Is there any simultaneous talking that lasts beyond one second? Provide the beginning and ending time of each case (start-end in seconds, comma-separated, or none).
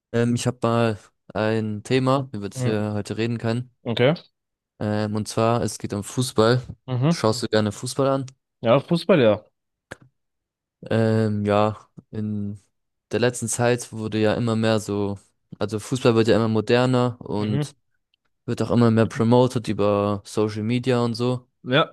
none